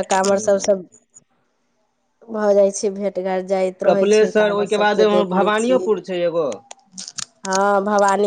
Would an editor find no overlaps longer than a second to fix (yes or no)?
no